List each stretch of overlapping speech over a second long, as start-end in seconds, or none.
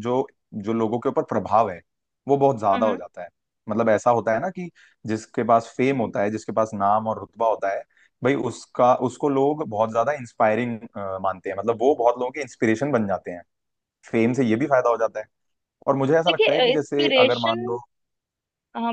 16.3-17.6